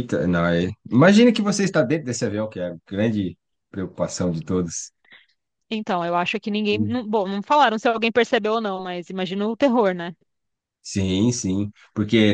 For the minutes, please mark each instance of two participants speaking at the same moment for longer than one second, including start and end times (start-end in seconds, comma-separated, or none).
none